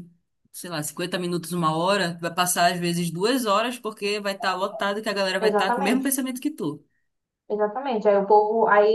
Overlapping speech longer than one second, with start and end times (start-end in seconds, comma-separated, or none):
none